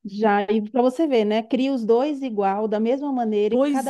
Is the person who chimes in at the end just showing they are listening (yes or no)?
no